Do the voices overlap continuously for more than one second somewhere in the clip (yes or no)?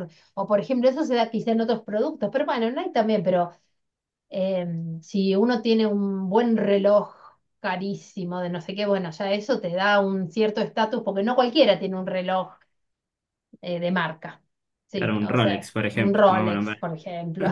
yes